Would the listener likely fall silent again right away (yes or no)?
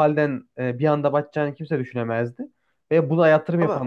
yes